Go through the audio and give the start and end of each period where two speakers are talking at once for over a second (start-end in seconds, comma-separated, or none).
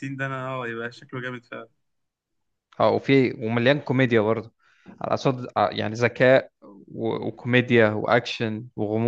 none